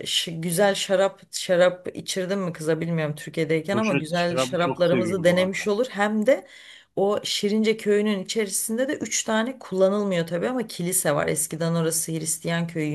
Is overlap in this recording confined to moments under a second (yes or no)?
no